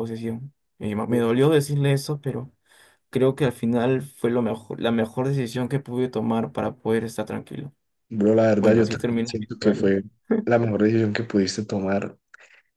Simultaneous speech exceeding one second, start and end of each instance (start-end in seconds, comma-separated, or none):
8.6-9.9